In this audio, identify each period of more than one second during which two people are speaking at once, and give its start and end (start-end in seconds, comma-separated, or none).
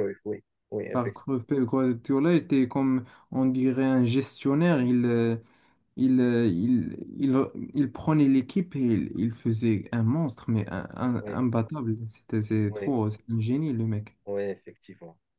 none